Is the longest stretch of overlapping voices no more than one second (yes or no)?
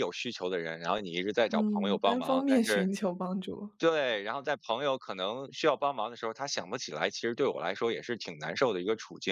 no